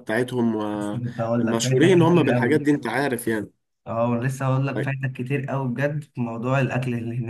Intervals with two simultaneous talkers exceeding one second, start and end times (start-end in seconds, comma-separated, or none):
1.4-2.6